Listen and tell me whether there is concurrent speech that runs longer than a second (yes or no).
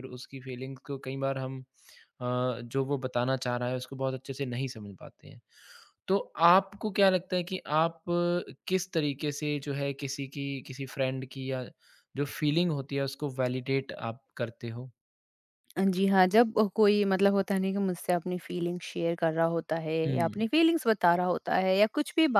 no